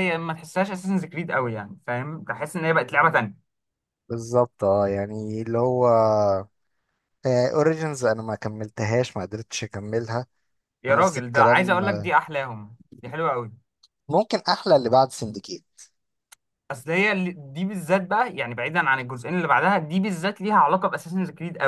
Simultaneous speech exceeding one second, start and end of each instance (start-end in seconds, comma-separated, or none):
10.9-12.1